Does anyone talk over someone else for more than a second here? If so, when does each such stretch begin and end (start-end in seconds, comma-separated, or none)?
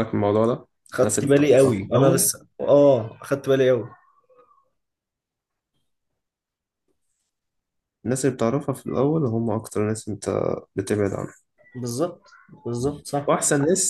0.9-2.3